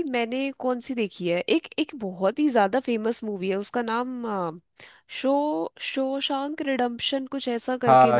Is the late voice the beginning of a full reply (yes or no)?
yes